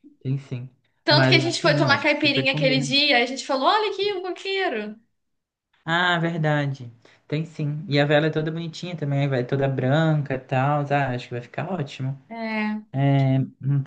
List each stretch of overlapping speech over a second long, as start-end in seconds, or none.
1.1-2.9